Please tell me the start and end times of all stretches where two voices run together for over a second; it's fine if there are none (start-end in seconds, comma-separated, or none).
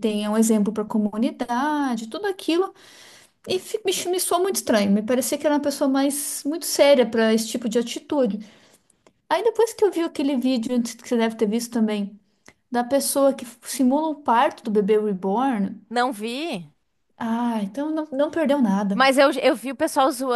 none